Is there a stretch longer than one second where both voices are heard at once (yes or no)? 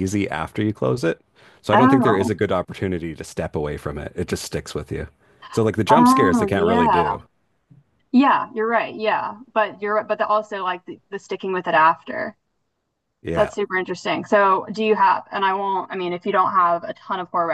yes